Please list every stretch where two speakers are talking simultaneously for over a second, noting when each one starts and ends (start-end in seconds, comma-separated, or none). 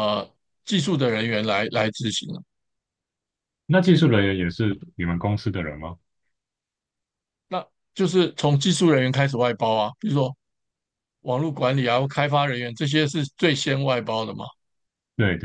none